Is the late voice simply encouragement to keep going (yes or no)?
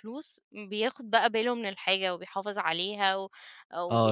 no